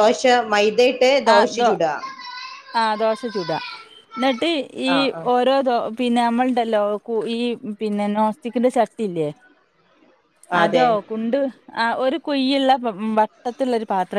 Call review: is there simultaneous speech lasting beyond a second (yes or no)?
no